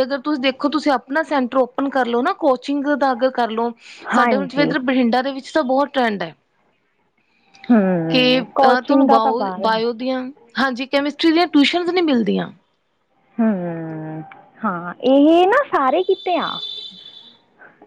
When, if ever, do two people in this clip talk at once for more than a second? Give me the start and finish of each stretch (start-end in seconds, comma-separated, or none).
8.1-9.8